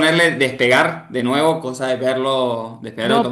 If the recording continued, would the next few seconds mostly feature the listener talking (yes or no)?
yes